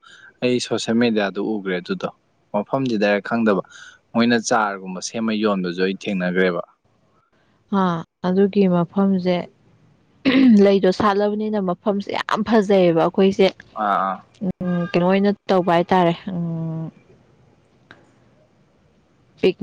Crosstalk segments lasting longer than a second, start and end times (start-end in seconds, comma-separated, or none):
none